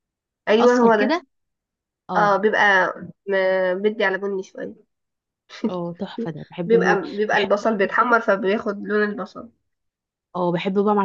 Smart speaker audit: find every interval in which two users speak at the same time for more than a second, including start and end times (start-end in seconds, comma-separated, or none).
6.7-8.2